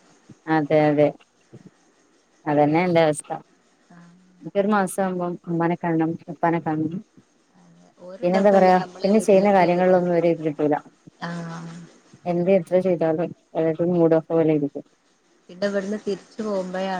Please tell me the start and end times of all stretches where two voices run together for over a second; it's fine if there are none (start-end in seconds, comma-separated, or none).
8.2-10.0